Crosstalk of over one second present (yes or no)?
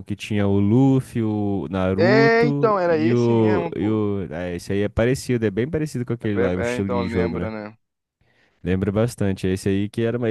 yes